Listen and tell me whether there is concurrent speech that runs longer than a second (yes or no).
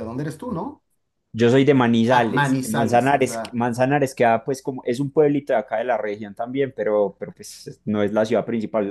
yes